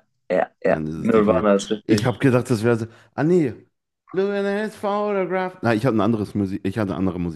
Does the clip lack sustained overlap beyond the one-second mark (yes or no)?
no